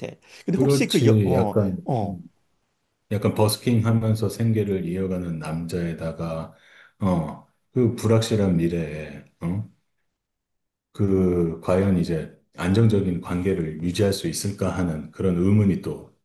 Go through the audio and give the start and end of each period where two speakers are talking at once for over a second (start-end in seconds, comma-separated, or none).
0.6-2.2